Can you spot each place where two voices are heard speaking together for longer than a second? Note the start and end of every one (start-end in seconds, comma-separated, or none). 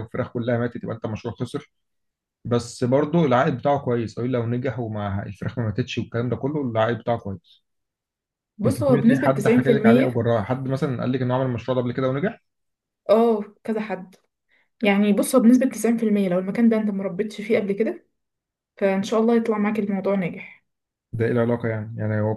8.6-10.2